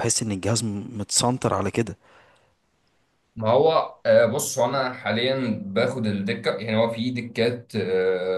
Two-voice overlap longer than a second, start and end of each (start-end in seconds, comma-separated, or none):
none